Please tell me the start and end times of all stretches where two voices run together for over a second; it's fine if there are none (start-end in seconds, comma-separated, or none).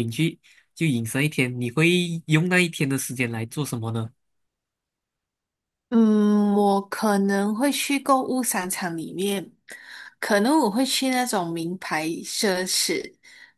none